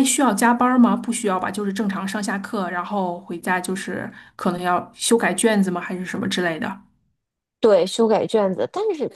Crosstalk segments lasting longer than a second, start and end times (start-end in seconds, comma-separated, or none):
none